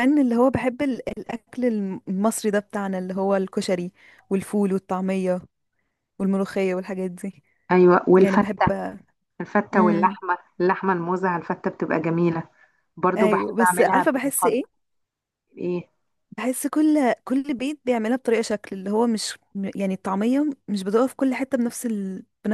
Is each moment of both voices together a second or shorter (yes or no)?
no